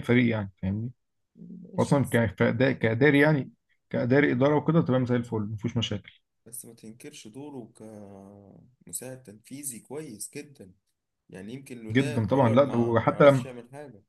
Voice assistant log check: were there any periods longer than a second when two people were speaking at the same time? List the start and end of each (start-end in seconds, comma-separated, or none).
11.9-13.5